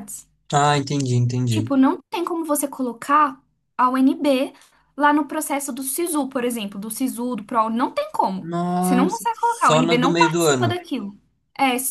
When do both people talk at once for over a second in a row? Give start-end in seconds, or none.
8.4-10.8